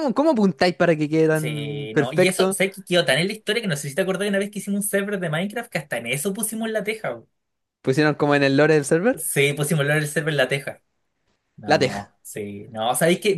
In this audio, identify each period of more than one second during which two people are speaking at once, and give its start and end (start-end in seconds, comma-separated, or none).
1.3-2.6